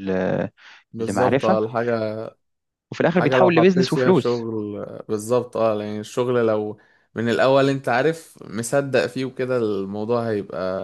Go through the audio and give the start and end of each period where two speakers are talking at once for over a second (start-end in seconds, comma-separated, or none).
3.1-4.4